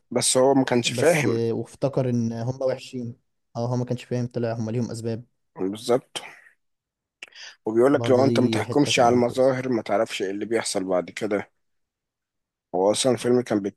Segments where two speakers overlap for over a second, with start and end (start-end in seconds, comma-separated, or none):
7.9-9.5